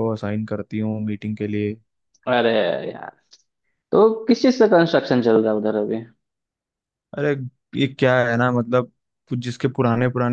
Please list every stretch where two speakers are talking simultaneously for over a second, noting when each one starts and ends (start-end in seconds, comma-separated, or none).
none